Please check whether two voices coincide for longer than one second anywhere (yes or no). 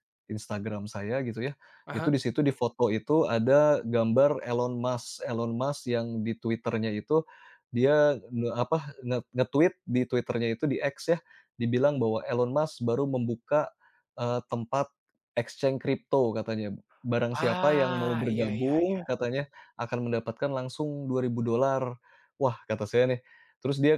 yes